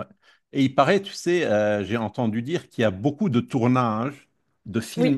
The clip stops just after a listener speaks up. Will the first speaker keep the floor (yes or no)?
yes